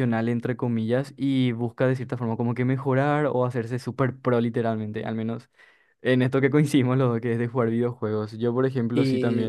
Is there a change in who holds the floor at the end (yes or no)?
no